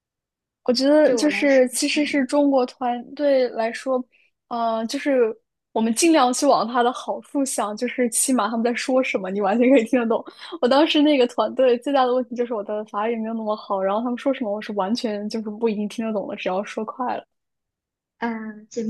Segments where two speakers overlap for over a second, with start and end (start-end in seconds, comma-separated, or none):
1.0-2.3